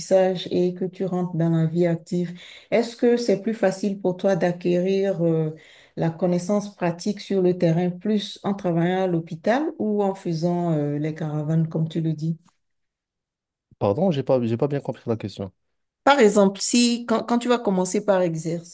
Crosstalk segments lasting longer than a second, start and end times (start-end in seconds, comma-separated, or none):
none